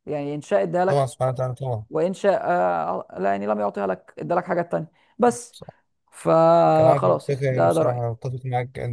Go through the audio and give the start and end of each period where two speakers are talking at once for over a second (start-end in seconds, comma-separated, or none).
6.8-8.1